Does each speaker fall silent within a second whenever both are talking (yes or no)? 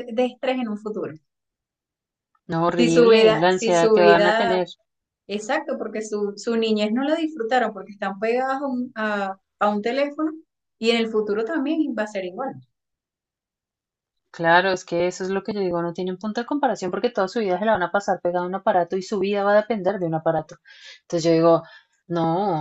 no